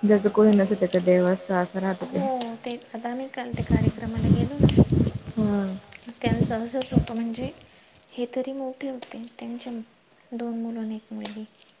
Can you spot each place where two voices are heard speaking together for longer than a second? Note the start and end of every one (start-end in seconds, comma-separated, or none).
0.7-2.3